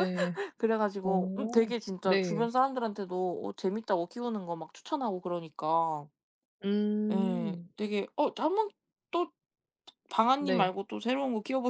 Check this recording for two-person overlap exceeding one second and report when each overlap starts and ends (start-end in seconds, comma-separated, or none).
1.0-2.5